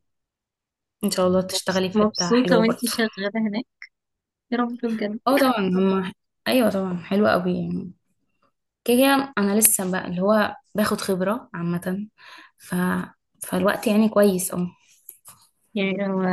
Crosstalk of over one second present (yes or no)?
yes